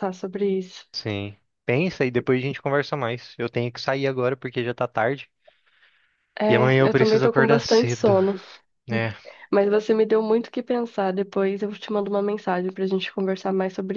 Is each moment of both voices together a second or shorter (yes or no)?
no